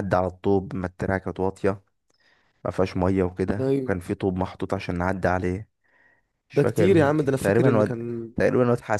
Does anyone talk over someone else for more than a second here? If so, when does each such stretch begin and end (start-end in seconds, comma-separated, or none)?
6.5-8.3